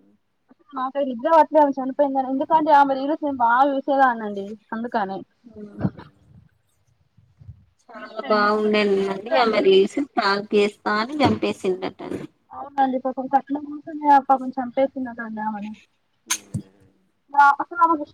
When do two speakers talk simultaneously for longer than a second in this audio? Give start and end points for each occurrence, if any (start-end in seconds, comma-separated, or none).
none